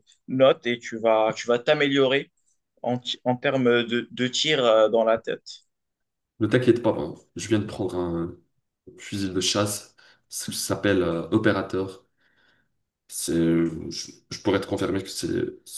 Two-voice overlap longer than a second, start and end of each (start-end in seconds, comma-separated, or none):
none